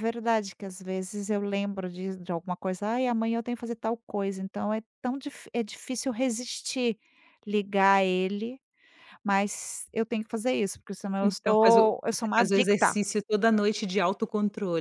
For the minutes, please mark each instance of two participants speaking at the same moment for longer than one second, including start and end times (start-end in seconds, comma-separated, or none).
11.2-12.9